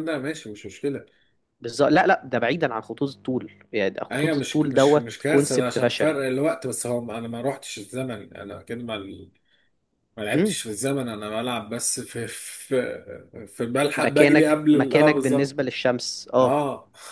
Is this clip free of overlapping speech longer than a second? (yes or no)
no